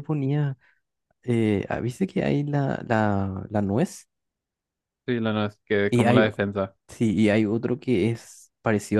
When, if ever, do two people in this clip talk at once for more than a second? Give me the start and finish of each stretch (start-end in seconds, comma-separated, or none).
none